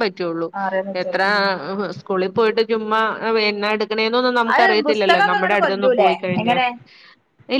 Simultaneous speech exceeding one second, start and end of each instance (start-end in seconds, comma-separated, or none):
4.5-6.5